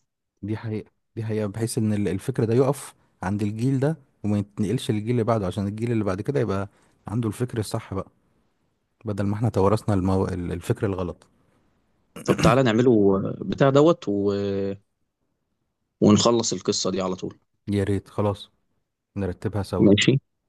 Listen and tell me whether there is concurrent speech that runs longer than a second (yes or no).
no